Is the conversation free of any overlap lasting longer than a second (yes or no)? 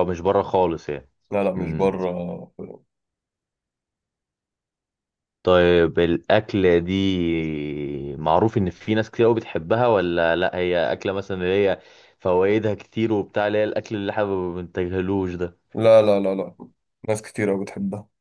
yes